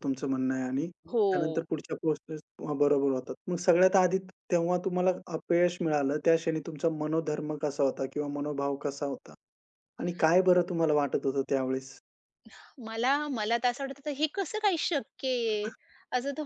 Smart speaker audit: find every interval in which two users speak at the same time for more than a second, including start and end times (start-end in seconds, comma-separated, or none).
none